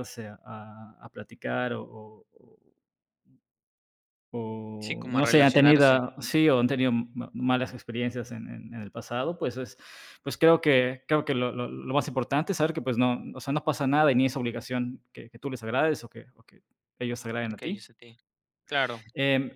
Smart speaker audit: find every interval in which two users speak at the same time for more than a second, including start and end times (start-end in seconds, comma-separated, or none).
4.8-6.0